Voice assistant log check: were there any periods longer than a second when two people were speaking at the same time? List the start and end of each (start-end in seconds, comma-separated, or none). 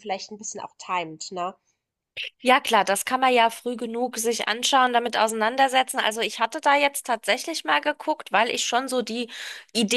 none